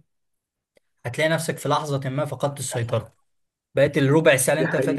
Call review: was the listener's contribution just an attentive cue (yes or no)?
yes